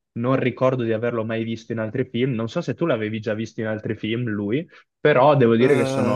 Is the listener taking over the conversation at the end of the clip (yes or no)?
no